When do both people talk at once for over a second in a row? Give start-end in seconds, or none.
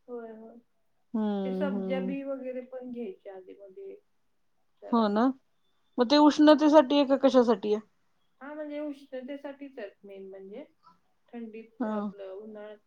none